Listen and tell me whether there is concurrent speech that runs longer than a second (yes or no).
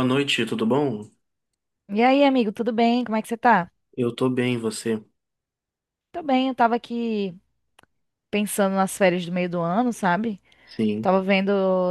no